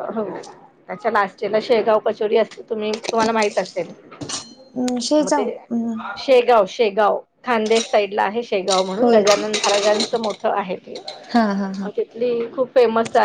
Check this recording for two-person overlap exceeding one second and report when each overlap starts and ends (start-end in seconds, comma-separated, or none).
none